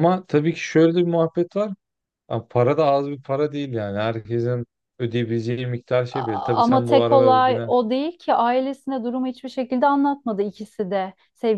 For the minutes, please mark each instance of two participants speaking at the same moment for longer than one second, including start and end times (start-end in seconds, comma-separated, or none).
6.1-7.7